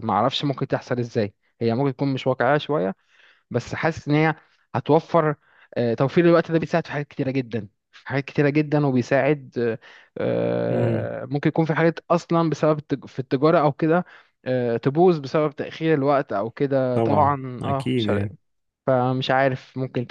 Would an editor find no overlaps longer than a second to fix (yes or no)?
no